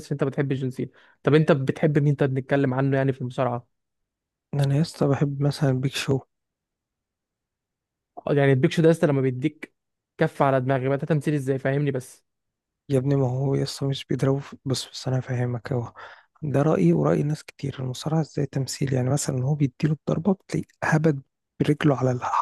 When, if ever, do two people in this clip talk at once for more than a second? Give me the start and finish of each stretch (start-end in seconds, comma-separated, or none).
none